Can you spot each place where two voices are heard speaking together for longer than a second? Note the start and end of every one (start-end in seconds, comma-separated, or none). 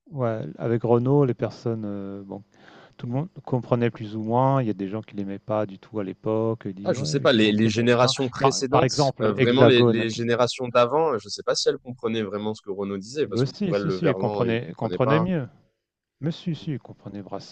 6.8-10.2, 13.2-15.3